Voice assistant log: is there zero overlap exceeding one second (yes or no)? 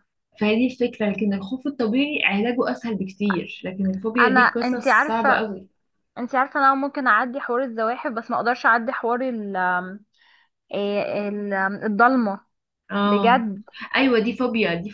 no